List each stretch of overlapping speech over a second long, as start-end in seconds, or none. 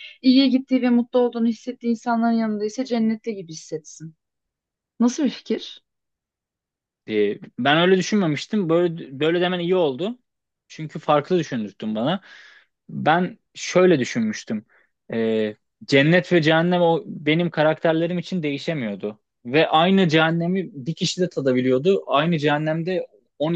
none